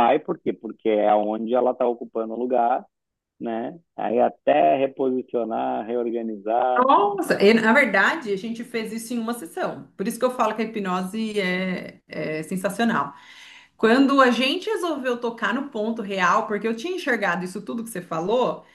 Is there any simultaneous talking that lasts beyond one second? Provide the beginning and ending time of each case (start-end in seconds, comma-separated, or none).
none